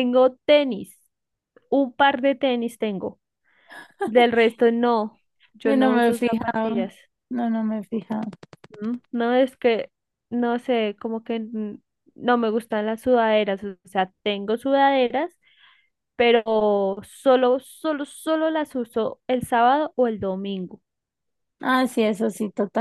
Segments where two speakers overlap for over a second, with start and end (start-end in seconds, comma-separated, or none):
5.6-6.9